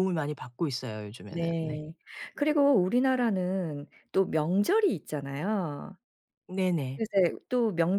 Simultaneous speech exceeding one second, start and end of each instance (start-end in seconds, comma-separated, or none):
none